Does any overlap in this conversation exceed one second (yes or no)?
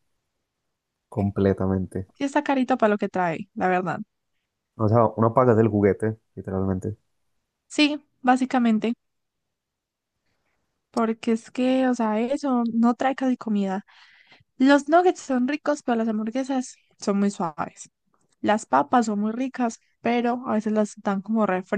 no